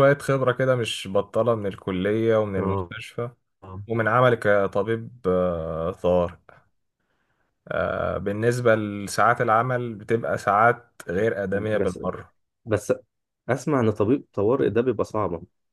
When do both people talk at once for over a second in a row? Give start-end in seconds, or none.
none